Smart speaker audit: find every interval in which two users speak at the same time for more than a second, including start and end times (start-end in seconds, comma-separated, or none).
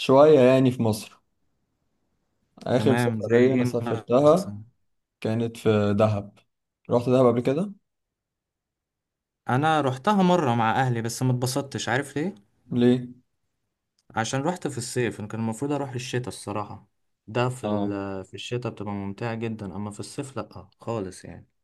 2.8-4.6